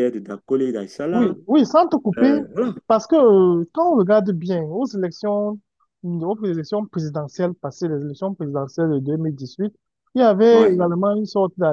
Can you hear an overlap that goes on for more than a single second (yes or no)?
no